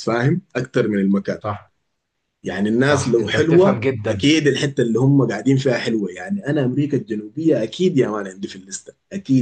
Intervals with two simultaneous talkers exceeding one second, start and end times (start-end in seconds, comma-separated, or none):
2.8-4.2